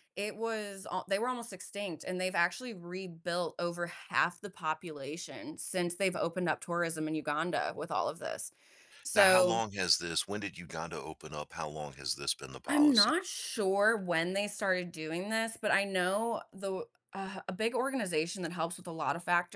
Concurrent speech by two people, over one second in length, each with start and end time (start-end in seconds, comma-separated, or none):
none